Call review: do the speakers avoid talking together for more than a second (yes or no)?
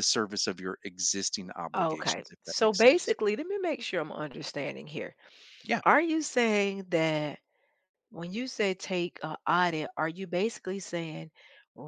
no